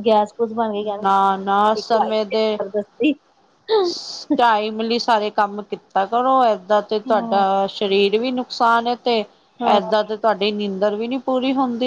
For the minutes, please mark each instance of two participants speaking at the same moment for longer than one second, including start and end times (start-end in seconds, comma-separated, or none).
1.0-2.6